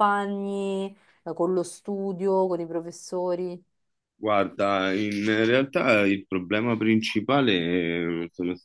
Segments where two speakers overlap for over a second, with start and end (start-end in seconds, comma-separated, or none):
none